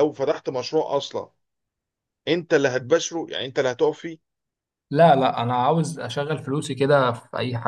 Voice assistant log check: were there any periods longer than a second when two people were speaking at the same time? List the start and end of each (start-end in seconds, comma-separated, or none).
none